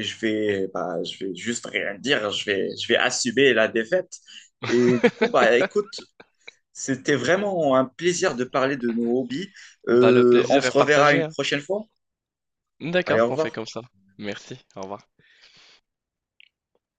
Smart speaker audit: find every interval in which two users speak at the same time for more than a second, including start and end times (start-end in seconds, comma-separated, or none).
9.9-11.4